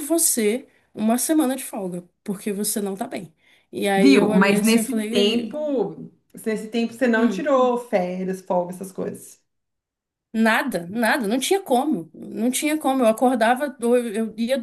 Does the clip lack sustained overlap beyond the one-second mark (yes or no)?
no